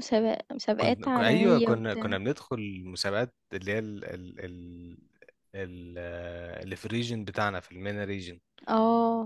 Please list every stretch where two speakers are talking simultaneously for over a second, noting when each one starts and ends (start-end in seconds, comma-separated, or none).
0.8-2.1